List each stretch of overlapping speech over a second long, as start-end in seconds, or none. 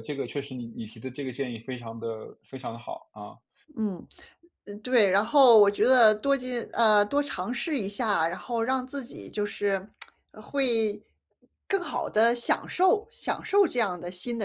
none